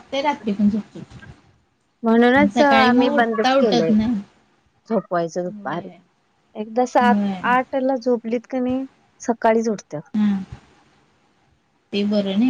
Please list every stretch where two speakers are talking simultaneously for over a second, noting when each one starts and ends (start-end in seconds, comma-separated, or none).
2.4-3.9